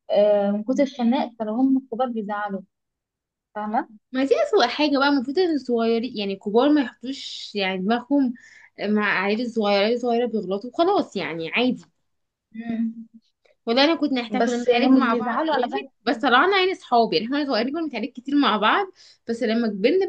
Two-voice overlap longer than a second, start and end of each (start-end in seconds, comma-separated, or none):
14.4-15.9